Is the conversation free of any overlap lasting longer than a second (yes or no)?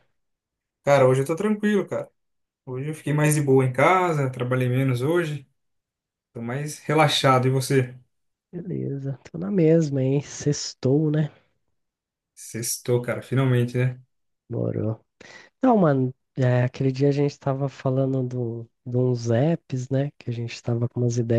yes